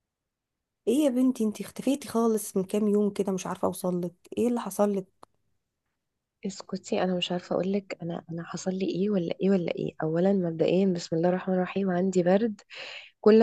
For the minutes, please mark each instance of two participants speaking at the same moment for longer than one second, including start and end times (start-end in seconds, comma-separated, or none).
none